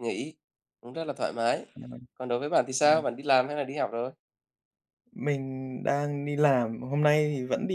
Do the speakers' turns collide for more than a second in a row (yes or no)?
no